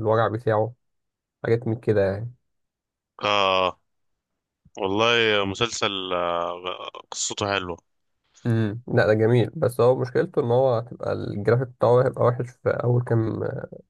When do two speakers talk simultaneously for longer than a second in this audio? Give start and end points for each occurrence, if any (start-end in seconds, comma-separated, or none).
none